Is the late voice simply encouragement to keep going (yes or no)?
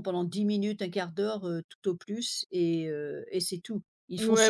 no